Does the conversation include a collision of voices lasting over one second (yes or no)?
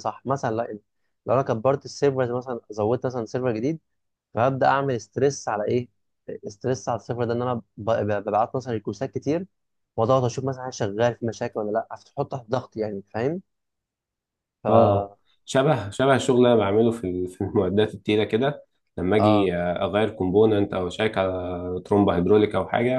no